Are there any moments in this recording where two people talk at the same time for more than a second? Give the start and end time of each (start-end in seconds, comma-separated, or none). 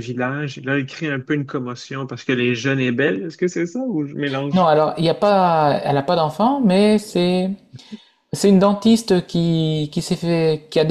none